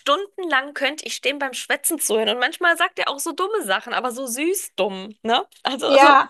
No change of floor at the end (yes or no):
no